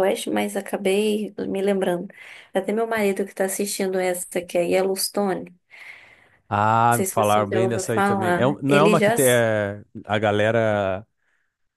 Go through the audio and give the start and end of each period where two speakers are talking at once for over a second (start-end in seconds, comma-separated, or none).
6.9-9.4